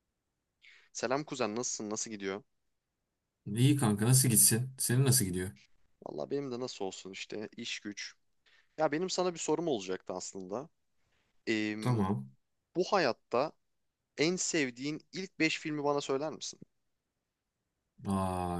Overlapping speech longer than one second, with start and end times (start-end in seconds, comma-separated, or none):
none